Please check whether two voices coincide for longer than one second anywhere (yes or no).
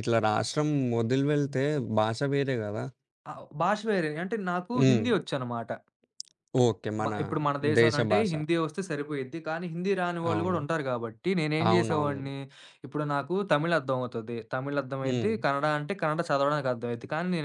no